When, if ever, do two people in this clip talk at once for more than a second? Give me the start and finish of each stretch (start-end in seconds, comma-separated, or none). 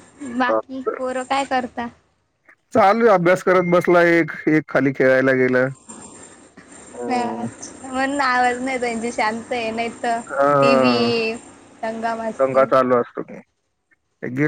none